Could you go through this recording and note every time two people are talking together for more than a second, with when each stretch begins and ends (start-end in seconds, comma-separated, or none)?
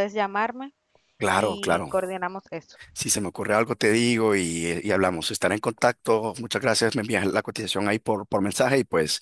none